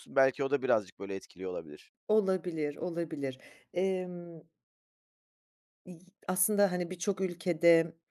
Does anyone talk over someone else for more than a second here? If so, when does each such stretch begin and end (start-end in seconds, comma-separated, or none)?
none